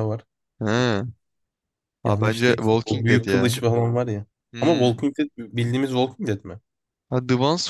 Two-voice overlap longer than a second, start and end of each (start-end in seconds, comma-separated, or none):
2.1-3.4